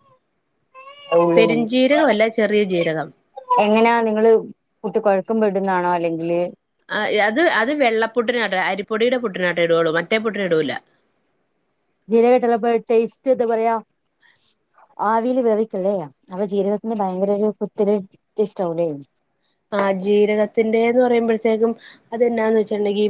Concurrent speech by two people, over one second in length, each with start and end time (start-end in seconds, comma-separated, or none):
none